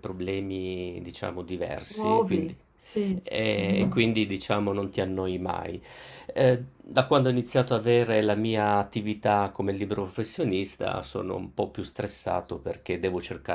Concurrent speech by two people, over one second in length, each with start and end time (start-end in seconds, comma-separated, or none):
none